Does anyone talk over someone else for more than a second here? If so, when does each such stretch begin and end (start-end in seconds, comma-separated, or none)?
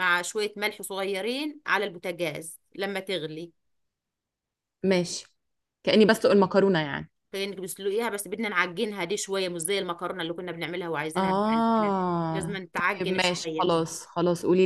11.2-13.8